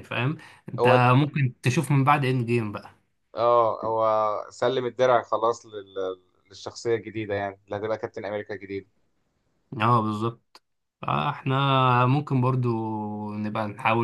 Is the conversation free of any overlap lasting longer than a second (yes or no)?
yes